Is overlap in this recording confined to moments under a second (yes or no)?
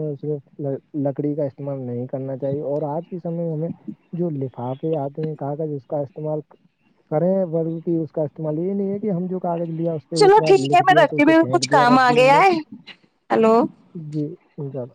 no